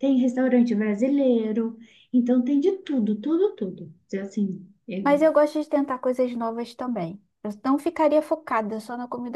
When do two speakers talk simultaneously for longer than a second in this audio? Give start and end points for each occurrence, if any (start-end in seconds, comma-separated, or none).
none